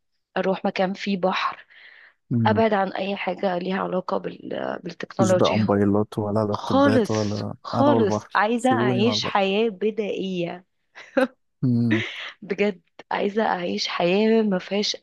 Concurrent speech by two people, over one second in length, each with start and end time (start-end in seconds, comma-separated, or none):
6.5-9.6